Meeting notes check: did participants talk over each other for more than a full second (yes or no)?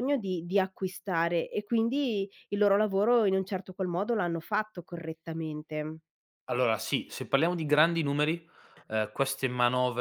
no